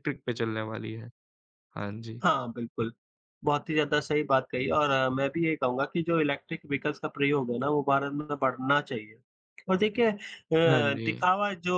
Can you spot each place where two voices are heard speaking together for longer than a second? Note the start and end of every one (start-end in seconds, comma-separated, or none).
none